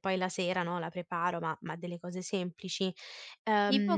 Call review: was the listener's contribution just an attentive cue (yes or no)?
no